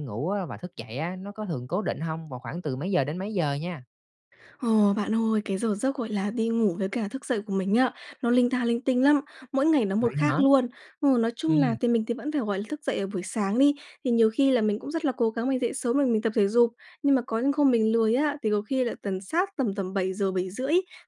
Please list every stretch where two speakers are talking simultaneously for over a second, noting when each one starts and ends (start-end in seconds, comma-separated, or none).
none